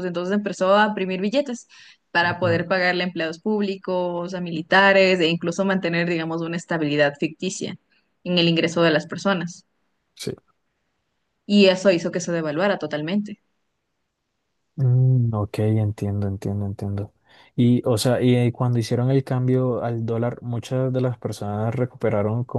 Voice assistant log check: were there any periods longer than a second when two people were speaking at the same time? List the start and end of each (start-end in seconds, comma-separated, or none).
none